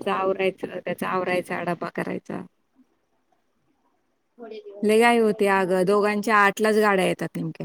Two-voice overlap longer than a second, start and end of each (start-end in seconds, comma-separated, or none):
4.9-6.3